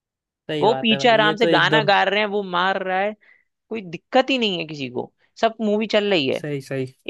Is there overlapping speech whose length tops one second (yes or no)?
yes